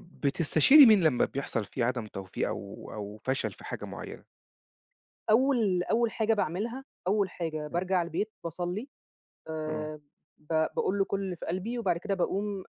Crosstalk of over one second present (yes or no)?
no